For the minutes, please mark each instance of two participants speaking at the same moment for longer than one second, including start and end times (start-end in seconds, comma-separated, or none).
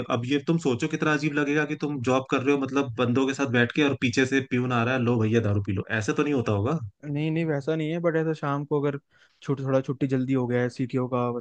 none